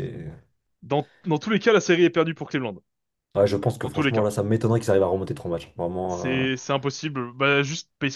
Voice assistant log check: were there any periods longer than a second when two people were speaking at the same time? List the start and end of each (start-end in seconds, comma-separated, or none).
none